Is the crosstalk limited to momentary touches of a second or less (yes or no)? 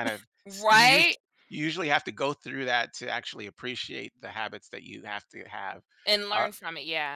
yes